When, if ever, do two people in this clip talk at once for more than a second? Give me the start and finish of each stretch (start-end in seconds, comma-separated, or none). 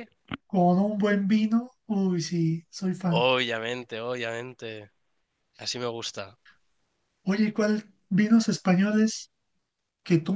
none